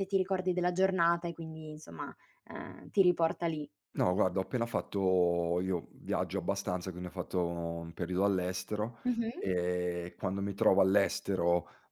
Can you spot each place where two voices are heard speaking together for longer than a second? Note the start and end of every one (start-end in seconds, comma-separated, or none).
none